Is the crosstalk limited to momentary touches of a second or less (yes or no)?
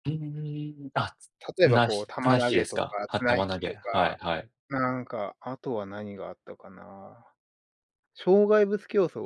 no